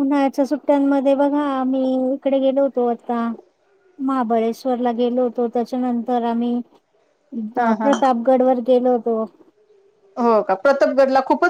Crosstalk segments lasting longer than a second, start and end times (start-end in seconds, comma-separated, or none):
none